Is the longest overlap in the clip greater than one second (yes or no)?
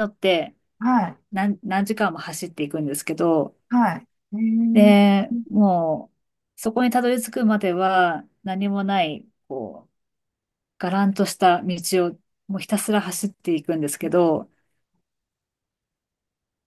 no